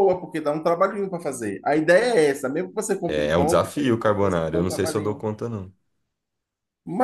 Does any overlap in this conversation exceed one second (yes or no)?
yes